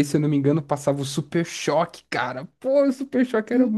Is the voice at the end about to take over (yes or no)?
yes